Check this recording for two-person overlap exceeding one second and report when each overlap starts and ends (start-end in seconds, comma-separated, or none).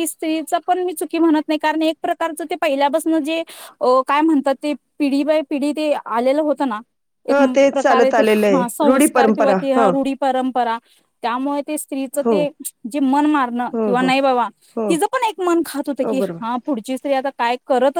7.3-9.6